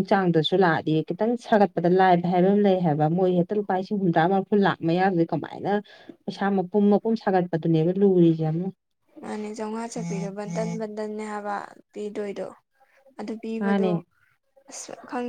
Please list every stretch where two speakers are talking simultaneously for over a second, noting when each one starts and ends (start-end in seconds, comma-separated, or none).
none